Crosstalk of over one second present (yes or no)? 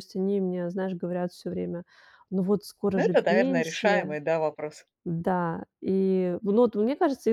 yes